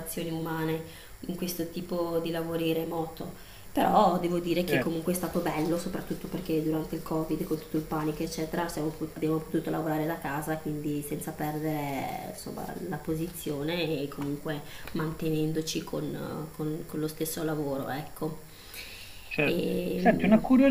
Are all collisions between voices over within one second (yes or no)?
yes